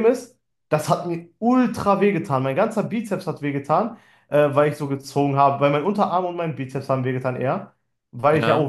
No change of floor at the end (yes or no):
yes